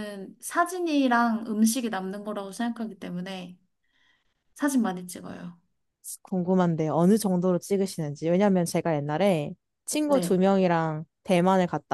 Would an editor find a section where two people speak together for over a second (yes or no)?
no